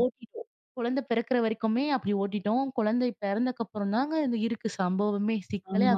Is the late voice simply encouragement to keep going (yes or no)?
no